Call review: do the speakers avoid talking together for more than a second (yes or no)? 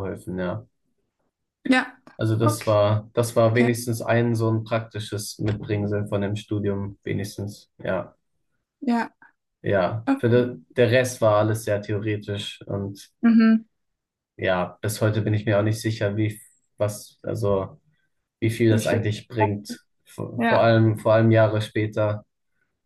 yes